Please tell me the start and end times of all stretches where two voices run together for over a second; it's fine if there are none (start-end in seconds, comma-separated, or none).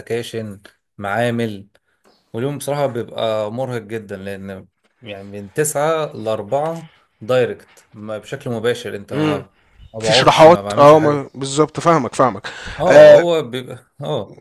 10.0-11.3